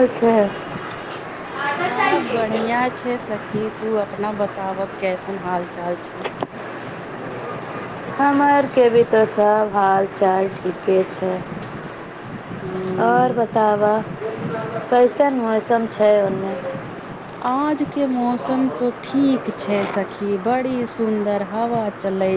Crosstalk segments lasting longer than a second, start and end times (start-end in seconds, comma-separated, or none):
none